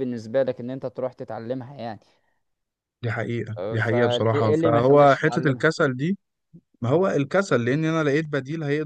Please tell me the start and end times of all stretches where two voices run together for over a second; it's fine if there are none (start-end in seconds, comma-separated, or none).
3.6-5.7